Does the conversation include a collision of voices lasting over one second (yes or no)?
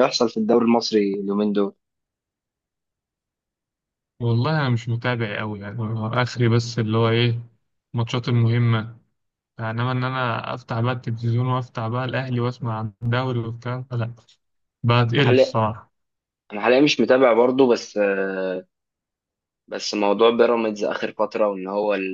no